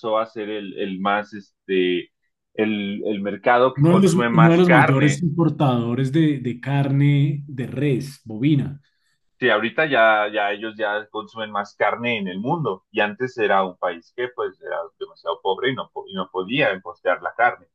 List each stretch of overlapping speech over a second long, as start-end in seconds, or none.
3.8-5.2